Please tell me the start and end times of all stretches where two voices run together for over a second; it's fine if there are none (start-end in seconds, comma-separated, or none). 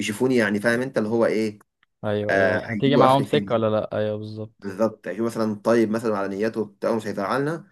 2.3-3.5